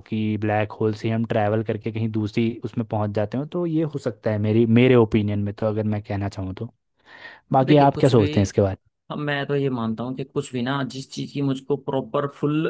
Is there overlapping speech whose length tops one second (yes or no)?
no